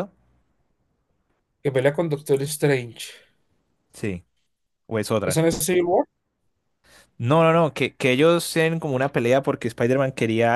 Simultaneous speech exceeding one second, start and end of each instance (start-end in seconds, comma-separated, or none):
none